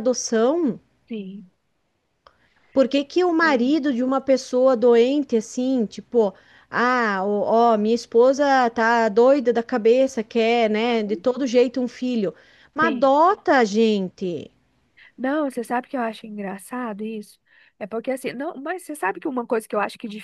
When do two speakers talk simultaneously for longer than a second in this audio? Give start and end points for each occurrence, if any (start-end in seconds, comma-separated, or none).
none